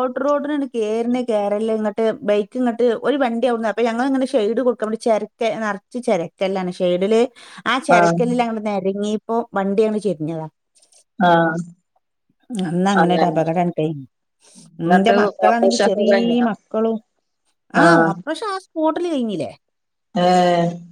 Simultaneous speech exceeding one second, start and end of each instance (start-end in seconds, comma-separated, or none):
14.7-16.5